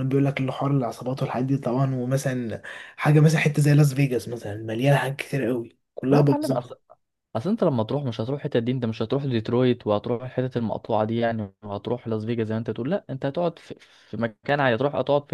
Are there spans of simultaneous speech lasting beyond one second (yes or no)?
no